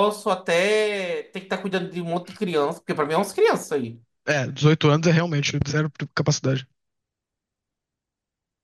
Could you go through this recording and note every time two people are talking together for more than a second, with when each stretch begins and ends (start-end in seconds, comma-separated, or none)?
none